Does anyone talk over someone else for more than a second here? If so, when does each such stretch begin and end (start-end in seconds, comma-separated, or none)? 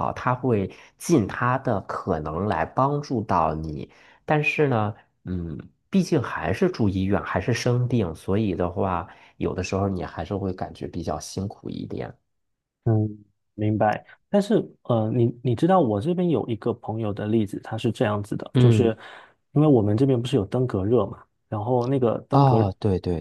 none